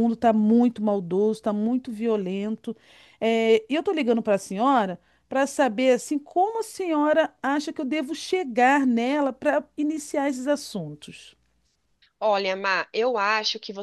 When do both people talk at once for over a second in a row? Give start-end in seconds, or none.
none